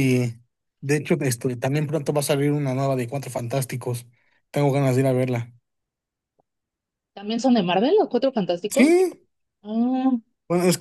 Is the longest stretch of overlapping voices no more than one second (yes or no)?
yes